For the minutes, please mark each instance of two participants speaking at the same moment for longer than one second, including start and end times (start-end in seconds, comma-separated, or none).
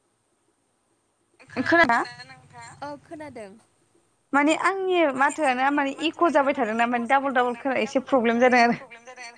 5.1-8.7